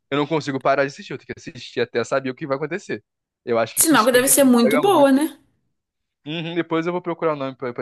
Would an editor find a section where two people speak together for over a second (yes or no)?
yes